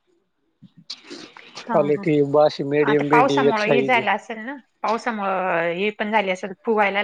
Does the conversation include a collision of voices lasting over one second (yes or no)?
no